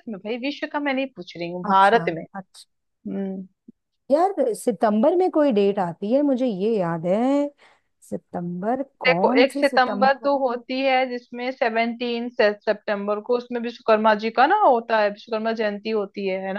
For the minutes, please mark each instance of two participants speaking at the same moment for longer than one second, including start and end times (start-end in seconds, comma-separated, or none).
9.1-10.6